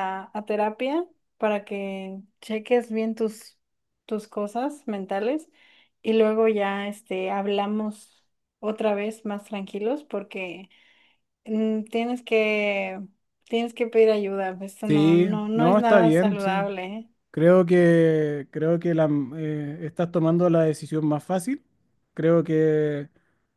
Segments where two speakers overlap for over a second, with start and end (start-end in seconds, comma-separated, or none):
14.8-16.7